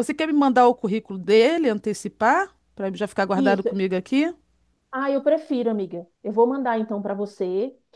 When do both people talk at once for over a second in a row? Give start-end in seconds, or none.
none